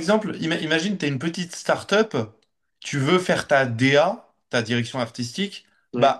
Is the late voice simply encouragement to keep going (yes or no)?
yes